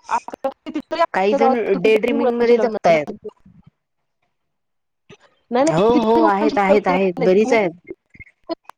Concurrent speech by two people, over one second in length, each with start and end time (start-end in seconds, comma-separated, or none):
1.1-3.0, 5.8-7.6